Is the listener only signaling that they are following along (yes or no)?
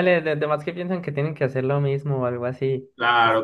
no